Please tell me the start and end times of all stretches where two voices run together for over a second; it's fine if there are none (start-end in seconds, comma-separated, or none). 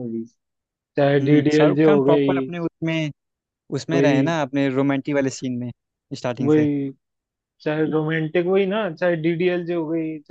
1.2-2.5